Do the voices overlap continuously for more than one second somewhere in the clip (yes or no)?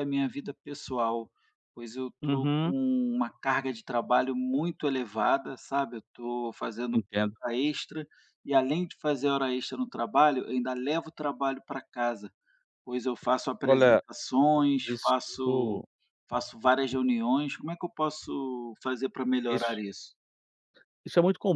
no